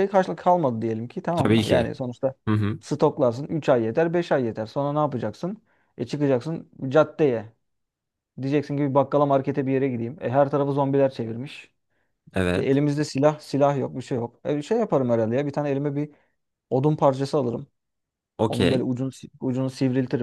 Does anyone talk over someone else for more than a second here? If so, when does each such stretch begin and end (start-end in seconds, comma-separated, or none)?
none